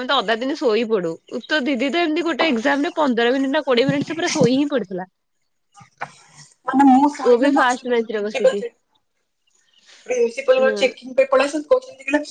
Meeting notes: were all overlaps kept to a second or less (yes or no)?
no